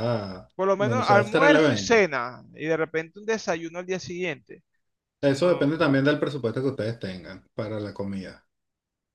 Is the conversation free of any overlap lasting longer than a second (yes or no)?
no